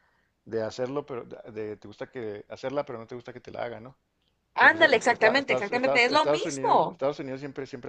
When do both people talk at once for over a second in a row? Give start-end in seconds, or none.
4.6-7.0